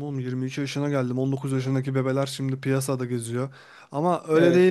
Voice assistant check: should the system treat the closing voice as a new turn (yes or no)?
no